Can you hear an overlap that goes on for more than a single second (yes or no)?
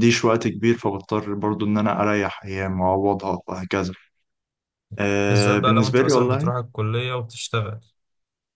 yes